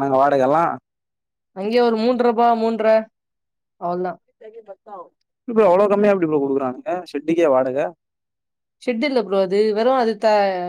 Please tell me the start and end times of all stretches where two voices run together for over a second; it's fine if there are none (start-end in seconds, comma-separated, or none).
none